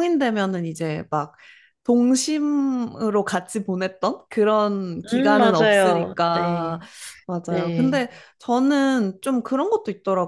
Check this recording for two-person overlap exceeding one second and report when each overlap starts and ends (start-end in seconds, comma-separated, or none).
5.1-6.8